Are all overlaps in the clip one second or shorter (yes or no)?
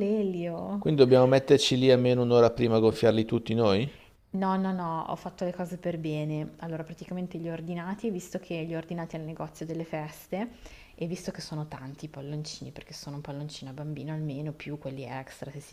yes